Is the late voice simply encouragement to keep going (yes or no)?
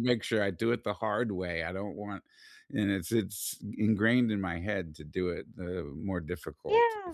no